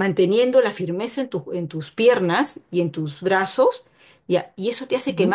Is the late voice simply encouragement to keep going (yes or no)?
yes